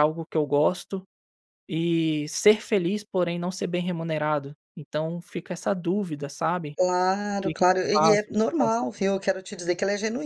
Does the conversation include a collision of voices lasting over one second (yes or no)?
yes